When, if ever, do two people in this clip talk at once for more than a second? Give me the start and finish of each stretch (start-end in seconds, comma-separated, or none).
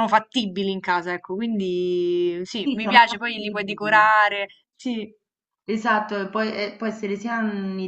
2.6-4.1